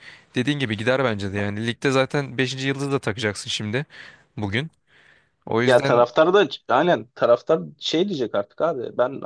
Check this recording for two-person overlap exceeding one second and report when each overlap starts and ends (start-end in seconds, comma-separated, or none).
none